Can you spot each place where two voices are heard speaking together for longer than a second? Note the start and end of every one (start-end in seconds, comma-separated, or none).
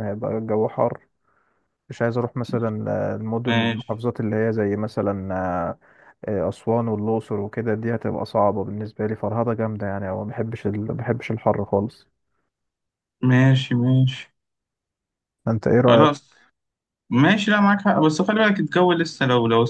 none